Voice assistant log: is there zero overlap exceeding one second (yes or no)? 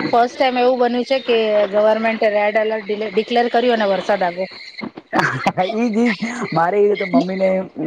yes